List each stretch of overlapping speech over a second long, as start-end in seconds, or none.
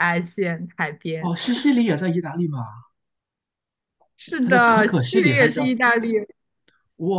4.4-5.8